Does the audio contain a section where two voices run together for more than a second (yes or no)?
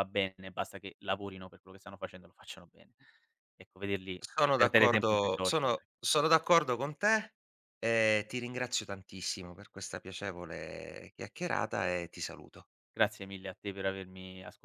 yes